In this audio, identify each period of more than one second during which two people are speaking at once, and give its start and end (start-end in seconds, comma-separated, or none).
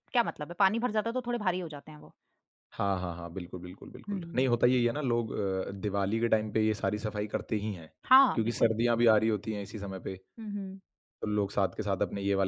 none